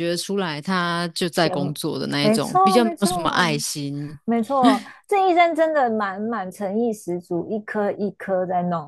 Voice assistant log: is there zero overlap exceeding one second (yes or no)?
no